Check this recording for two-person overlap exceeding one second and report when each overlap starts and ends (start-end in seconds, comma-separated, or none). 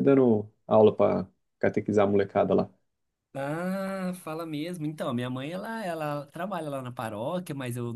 none